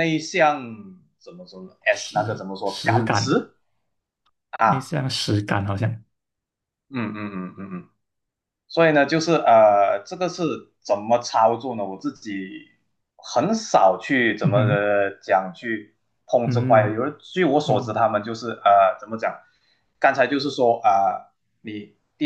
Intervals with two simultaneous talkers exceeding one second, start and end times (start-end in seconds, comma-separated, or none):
1.9-3.5